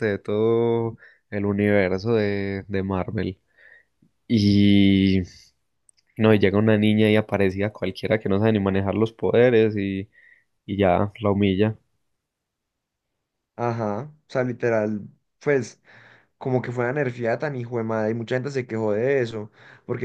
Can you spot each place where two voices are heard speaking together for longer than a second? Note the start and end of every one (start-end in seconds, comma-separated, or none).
none